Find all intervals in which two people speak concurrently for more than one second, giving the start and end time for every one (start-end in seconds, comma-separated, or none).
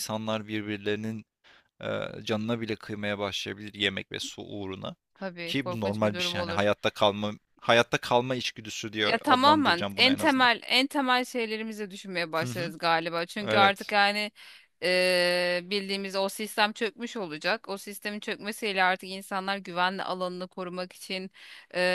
5.5-6.7, 9.0-10.5